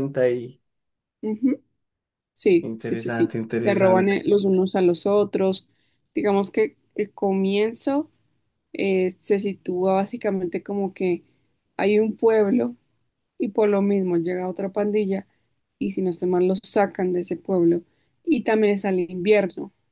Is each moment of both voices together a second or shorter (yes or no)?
no